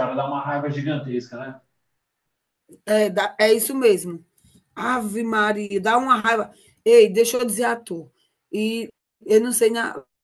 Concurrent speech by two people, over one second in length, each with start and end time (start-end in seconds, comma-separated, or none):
none